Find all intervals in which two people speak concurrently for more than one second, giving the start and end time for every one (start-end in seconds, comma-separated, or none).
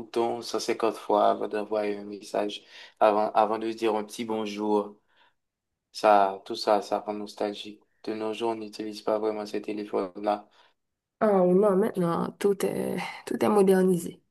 none